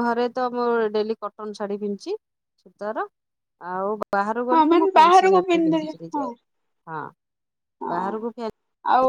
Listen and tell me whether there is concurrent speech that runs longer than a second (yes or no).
yes